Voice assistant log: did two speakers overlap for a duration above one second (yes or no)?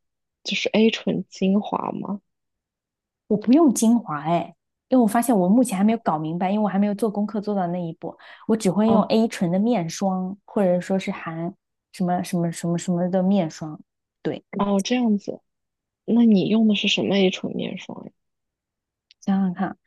no